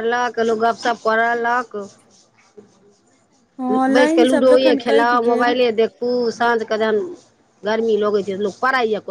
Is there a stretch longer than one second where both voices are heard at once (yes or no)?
yes